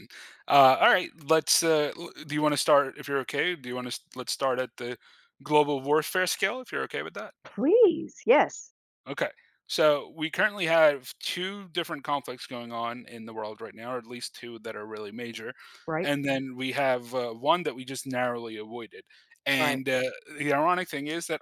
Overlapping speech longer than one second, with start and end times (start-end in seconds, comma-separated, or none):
none